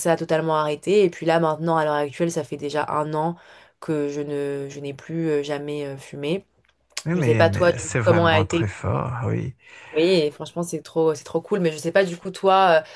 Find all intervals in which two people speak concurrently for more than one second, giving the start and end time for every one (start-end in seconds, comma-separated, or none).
7.2-8.8